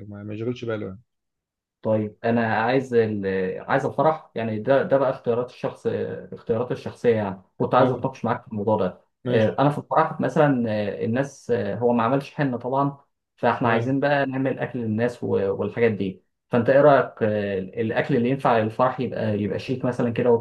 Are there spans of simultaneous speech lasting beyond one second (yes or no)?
no